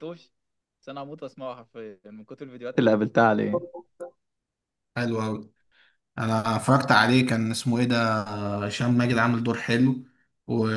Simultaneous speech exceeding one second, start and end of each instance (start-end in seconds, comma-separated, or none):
none